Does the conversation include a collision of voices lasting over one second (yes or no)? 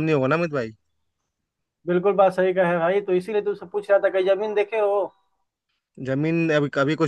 no